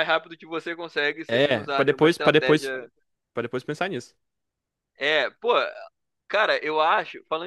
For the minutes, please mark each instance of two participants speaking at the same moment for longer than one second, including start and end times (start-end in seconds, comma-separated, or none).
1.3-2.7